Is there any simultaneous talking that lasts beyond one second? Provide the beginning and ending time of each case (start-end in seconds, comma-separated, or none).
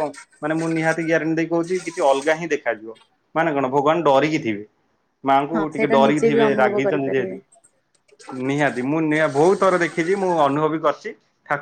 5.5-7.4